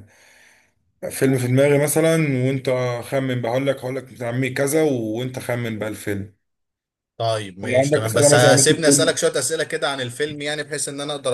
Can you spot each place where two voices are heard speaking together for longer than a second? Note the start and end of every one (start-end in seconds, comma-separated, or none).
7.6-9.2